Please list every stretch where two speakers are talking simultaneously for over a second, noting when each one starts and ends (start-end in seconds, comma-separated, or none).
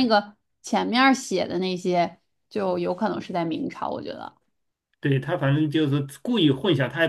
none